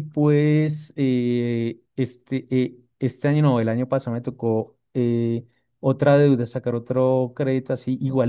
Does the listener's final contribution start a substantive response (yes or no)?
no